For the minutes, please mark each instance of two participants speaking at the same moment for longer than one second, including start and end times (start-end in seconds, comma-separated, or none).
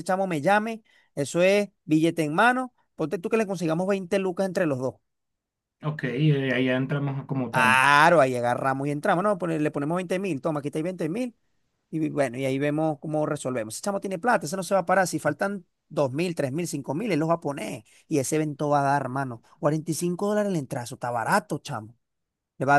none